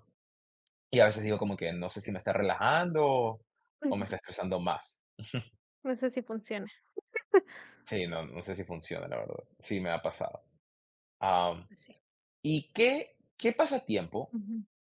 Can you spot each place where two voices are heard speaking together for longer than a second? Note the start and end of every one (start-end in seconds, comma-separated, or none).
none